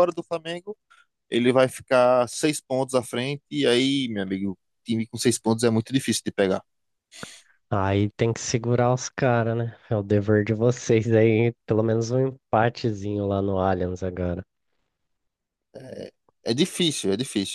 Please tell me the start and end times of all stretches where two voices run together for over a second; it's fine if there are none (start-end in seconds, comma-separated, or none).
none